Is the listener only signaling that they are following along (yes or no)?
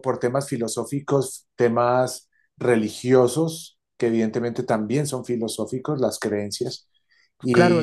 no